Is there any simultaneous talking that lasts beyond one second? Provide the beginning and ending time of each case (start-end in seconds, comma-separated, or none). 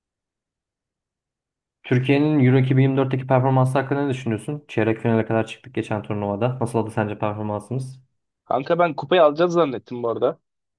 none